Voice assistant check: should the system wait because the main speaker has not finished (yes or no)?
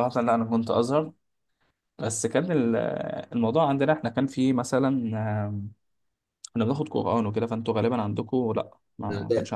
no